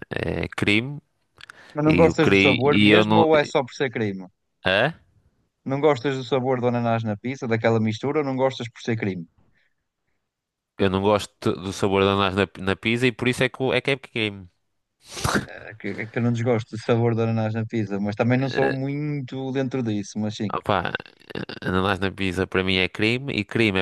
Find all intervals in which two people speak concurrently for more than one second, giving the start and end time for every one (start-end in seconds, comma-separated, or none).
1.9-3.3